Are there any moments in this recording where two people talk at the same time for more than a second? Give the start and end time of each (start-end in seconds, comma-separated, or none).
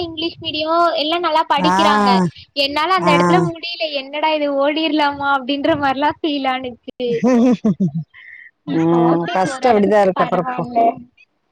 8.8-10.6